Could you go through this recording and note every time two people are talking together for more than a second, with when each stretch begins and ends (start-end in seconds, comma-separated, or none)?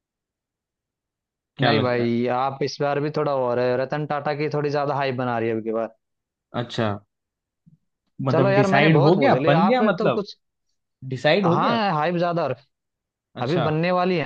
8.3-10.2